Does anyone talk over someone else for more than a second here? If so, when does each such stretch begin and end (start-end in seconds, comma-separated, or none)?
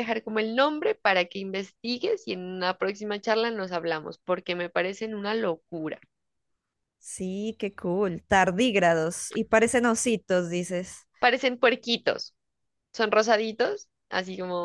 none